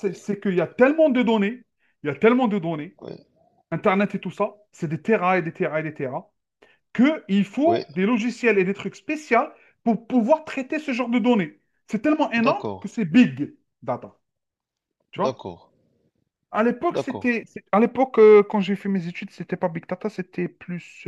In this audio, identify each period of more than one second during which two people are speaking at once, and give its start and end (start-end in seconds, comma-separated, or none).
none